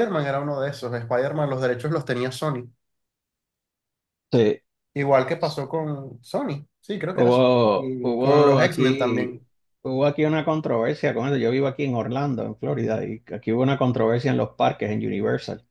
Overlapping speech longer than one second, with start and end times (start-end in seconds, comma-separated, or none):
7.1-9.4